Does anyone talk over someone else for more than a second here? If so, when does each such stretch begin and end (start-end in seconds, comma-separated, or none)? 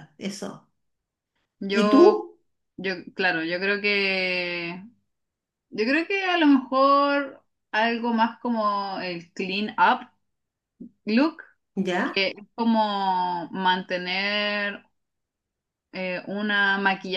none